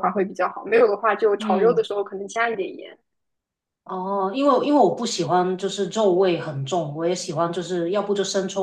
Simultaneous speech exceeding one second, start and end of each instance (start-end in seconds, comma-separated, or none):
none